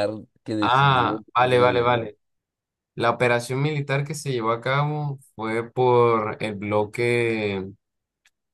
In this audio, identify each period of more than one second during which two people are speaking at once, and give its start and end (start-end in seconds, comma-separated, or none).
0.6-2.1